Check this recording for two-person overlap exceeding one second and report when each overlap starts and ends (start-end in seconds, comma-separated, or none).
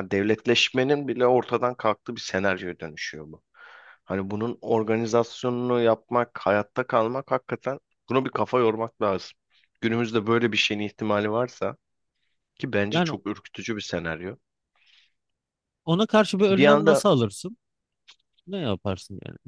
none